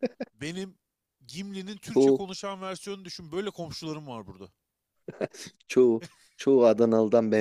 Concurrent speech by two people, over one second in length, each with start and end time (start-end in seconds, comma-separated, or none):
none